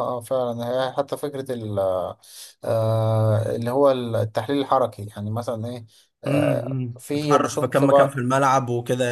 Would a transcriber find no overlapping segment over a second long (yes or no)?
no